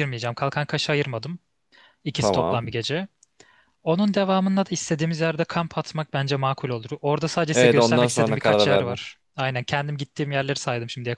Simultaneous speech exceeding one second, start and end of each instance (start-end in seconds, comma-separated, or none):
7.5-9.0